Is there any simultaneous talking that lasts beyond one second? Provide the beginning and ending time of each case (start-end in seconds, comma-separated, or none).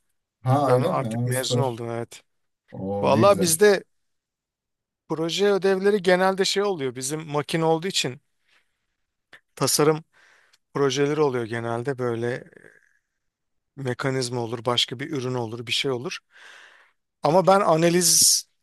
0.6-1.8